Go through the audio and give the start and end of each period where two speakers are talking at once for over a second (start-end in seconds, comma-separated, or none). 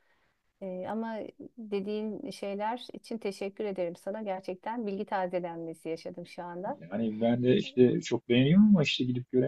none